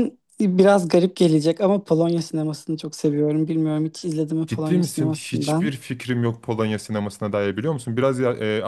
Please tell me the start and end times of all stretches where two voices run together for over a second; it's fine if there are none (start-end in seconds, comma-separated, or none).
4.5-5.7